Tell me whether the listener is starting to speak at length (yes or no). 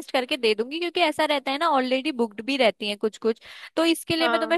no